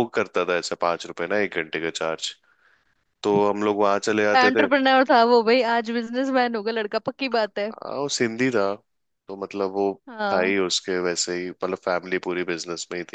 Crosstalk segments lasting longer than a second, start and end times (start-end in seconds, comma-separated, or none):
none